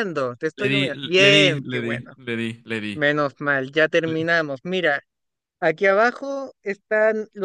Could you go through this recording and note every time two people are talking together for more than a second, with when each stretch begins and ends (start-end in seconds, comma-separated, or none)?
0.6-2.1